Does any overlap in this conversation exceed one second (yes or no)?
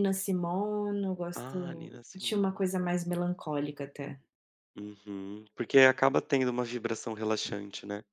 yes